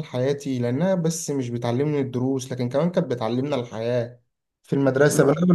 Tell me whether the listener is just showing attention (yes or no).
yes